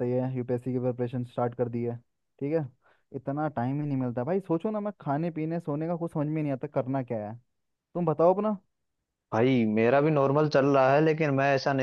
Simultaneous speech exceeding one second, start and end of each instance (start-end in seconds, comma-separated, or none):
none